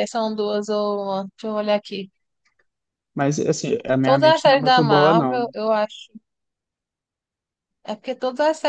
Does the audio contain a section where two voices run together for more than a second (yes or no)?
yes